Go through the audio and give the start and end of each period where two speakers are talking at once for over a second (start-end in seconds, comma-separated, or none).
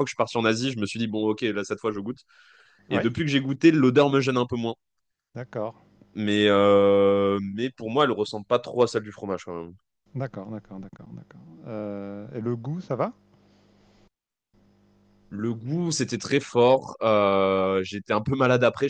none